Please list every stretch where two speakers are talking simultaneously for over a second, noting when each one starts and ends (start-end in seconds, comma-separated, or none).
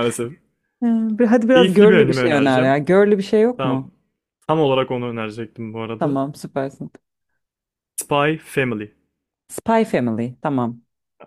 1.5-2.8